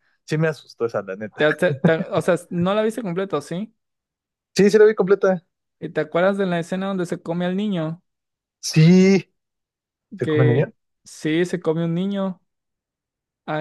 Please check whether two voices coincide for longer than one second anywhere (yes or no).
no